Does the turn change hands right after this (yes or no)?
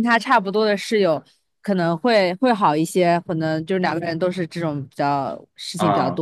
no